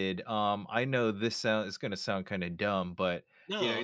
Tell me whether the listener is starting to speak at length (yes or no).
no